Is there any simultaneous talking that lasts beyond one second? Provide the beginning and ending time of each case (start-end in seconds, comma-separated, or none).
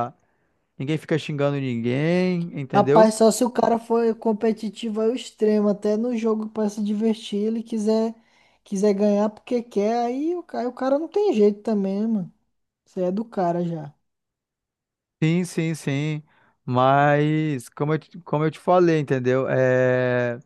none